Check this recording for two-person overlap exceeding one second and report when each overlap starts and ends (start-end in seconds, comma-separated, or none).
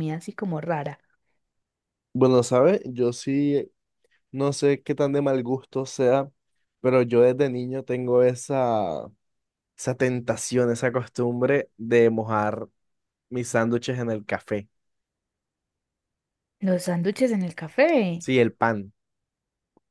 none